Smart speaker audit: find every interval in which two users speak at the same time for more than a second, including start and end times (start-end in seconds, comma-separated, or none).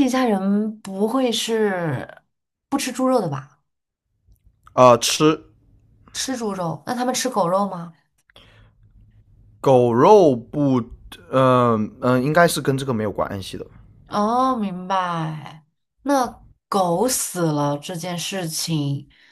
none